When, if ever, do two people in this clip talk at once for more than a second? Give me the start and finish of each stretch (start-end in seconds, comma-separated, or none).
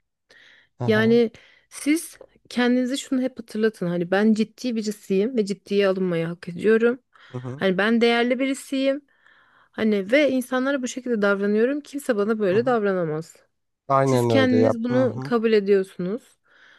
14.0-15.3